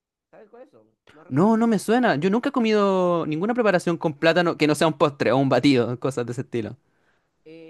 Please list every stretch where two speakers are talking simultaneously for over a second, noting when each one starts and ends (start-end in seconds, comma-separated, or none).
none